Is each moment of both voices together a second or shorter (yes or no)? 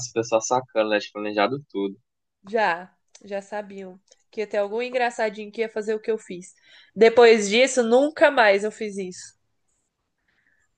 yes